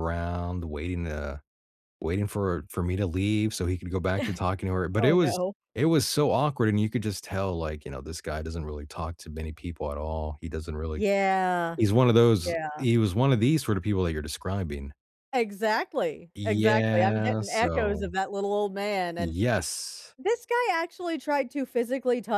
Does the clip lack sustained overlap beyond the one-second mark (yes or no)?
no